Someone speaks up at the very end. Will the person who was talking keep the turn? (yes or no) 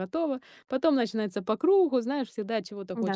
no